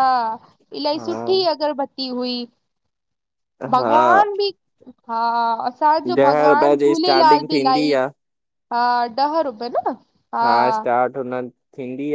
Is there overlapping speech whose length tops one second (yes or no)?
yes